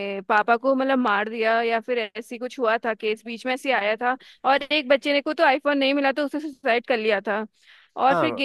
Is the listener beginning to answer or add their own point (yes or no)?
no